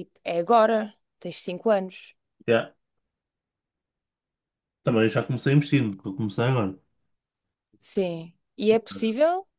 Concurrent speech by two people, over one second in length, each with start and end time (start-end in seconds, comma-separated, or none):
none